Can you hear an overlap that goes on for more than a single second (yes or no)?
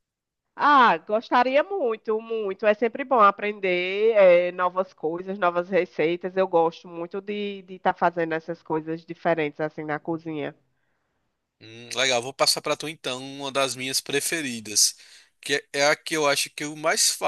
no